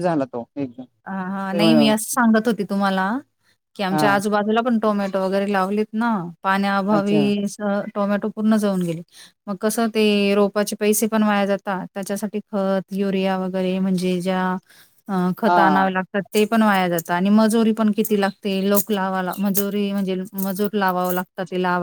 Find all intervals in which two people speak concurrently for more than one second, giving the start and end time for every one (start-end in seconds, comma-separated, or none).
none